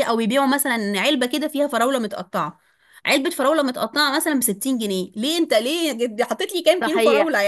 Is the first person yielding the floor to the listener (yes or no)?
yes